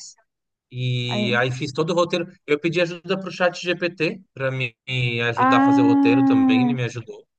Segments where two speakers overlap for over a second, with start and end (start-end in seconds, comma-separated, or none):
5.3-6.8